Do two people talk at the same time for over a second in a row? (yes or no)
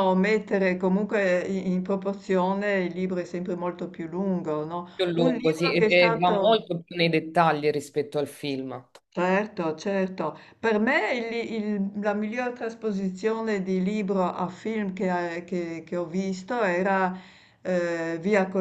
yes